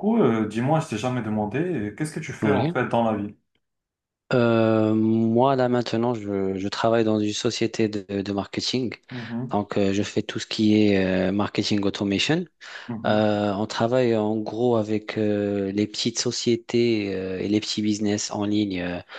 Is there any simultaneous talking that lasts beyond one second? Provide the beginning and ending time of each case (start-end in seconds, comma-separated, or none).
none